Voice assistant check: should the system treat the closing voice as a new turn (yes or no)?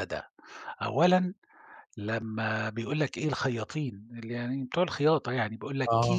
no